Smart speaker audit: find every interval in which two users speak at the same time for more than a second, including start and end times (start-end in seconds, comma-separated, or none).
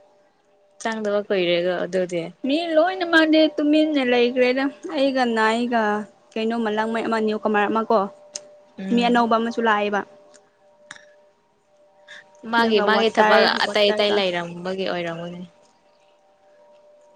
12.6-14.2